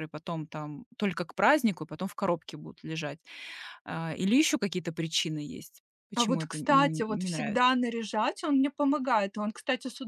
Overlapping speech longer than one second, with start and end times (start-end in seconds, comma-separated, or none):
6.2-7.7